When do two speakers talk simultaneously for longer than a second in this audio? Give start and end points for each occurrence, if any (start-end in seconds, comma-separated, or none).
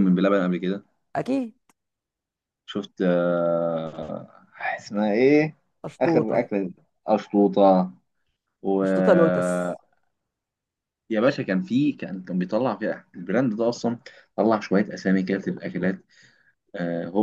none